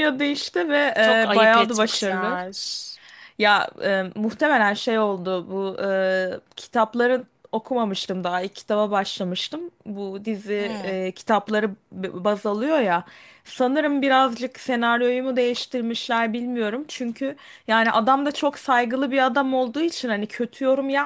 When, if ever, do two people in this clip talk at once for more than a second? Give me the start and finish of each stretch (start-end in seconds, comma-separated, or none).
1.0-2.4